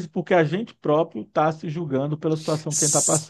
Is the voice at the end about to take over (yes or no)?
yes